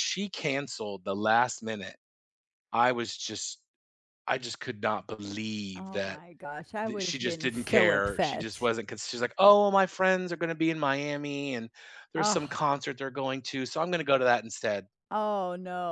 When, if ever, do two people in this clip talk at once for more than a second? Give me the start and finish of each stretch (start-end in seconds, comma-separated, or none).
6.8-8.7